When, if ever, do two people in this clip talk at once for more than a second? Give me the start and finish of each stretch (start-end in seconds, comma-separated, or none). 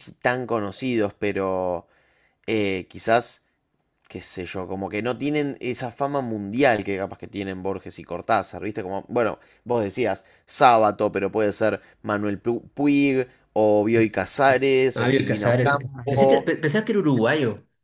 14.9-16.5